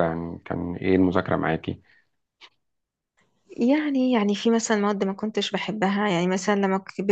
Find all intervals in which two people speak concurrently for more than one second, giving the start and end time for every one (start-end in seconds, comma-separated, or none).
none